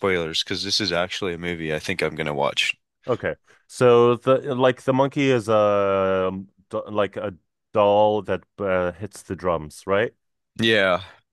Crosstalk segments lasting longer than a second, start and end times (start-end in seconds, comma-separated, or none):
none